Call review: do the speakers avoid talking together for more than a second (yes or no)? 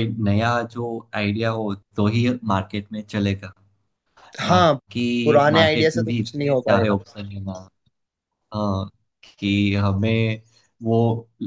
no